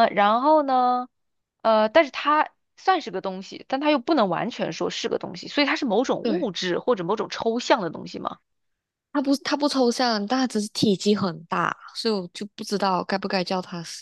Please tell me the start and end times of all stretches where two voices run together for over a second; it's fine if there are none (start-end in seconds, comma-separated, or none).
none